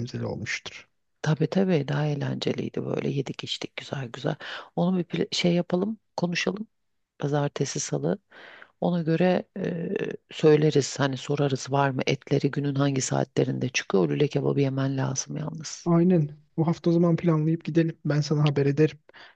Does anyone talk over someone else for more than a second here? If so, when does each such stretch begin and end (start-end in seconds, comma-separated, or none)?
none